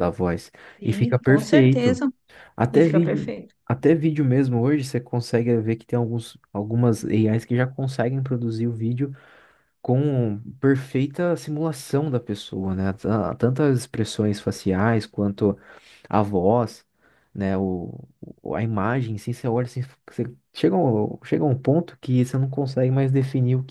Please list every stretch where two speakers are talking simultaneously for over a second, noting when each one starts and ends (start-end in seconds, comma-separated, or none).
0.8-2.0